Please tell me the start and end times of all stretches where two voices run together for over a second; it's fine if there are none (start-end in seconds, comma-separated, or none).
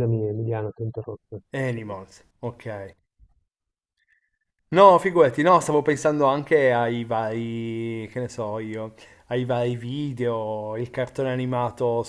none